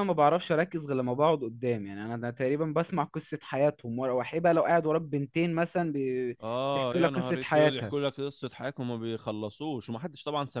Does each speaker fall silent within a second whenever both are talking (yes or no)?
no